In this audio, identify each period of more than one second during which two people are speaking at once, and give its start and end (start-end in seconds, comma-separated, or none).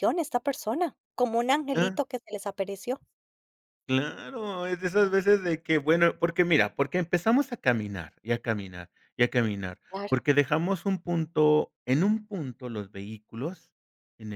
none